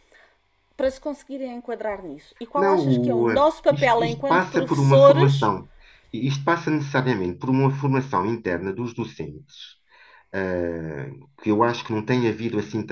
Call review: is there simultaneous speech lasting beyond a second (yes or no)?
yes